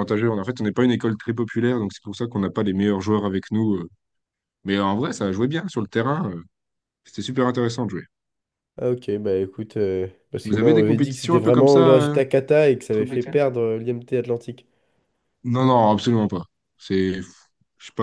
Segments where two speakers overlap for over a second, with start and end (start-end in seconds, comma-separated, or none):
10.4-12.2